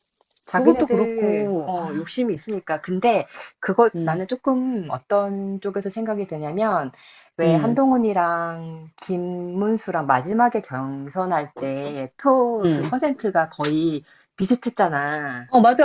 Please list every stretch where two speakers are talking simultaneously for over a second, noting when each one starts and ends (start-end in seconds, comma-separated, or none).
0.5-2.1